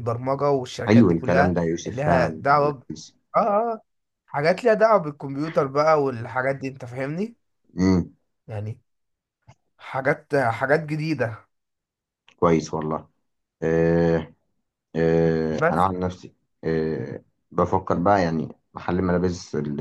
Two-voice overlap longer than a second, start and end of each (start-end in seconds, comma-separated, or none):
0.9-2.8